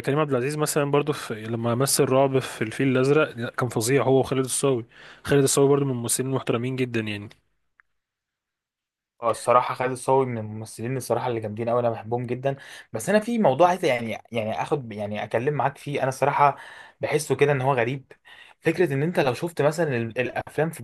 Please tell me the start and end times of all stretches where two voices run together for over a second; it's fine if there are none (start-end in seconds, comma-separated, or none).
none